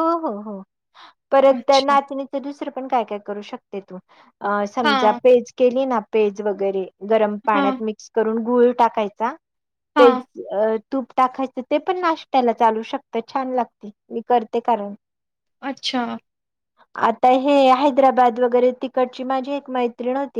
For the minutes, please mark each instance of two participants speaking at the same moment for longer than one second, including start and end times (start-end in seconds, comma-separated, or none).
none